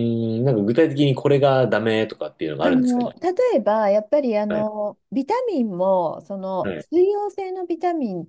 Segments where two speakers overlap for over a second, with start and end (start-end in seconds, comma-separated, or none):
none